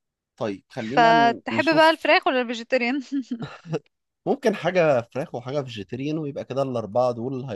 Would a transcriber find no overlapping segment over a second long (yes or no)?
no